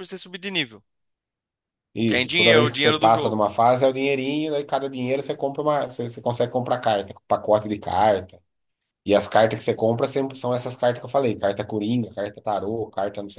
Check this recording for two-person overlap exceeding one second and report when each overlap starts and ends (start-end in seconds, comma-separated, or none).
2.1-3.4